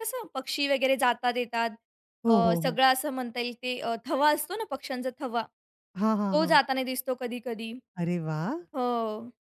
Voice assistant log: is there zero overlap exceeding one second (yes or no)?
yes